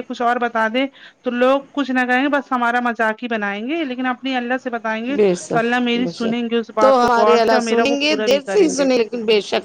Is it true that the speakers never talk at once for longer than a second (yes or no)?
no